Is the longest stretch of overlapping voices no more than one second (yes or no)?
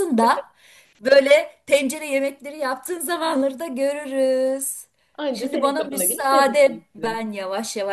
no